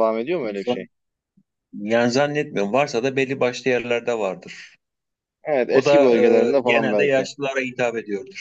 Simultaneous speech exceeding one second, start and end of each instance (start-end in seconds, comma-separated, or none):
5.7-7.3